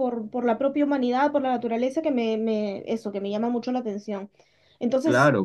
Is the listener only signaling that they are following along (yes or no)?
yes